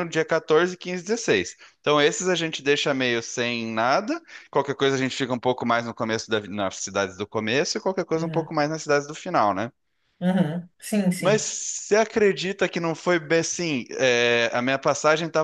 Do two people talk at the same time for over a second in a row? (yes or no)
no